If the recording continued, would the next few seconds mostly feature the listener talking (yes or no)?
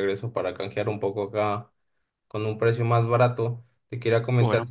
no